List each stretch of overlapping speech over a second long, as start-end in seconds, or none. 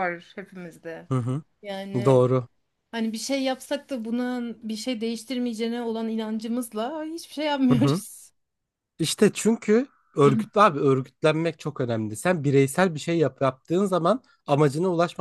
none